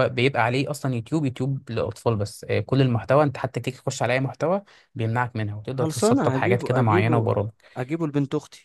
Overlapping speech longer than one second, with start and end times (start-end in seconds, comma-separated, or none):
5.7-7.3